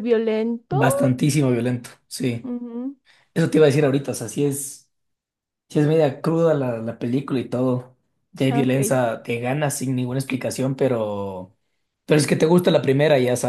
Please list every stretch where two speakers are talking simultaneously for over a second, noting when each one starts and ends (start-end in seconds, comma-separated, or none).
none